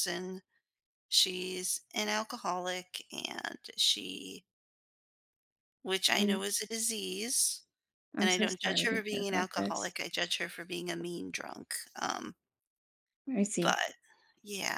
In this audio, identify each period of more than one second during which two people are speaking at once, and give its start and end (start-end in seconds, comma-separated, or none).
8.2-9.9